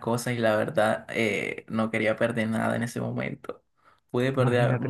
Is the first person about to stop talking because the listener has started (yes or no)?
yes